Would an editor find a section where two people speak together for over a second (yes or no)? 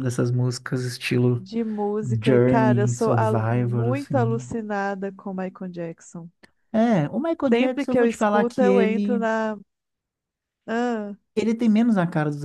yes